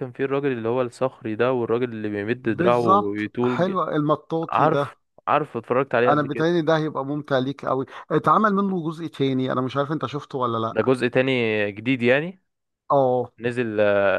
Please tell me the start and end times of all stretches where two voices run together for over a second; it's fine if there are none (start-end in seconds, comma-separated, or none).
2.4-3.8